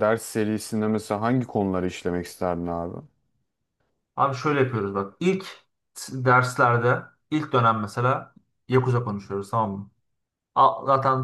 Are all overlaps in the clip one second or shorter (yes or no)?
yes